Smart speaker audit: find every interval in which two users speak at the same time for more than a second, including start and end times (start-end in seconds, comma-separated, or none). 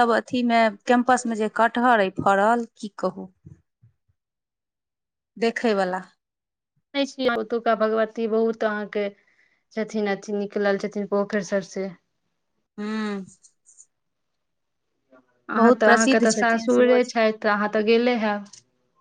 15.6-17.1